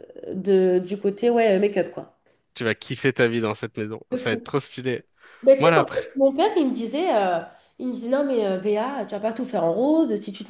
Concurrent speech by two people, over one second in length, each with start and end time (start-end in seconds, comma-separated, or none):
none